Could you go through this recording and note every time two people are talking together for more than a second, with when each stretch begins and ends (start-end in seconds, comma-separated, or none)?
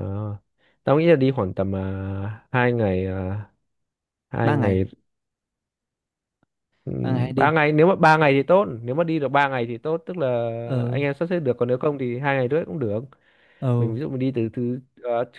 none